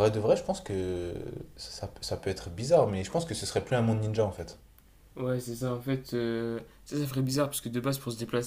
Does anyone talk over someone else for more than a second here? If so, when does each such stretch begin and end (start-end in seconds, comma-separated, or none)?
none